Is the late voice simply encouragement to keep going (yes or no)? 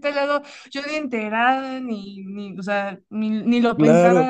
no